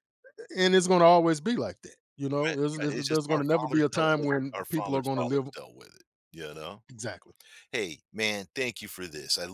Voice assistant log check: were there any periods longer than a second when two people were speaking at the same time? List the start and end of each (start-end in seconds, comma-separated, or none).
2.5-5.5